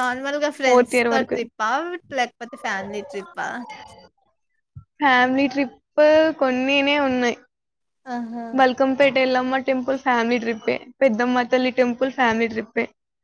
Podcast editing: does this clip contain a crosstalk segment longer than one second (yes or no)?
no